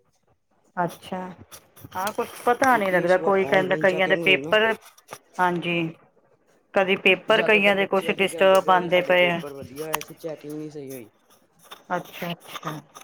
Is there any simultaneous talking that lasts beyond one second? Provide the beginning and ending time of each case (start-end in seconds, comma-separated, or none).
2.7-4.5